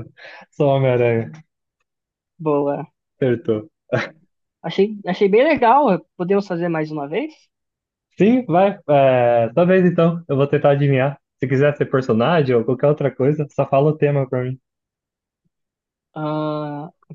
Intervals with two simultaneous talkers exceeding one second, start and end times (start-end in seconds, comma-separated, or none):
none